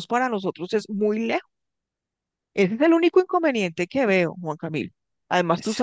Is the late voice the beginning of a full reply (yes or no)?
no